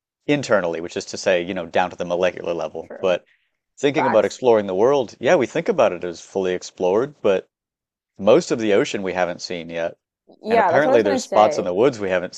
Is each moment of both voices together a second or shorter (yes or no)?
no